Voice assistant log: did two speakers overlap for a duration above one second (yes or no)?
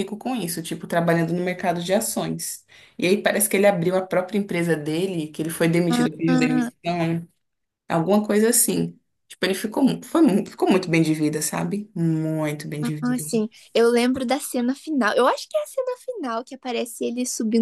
no